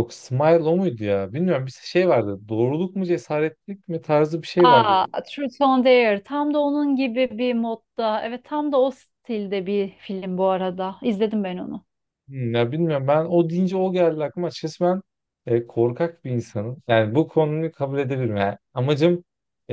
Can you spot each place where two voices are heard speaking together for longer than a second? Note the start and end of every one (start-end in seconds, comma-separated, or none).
none